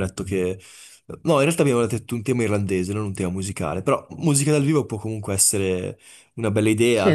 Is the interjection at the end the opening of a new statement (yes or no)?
yes